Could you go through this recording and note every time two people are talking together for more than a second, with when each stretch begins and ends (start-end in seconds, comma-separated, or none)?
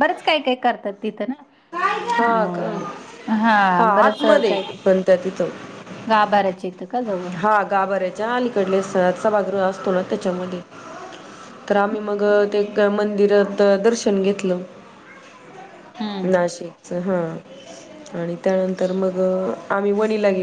none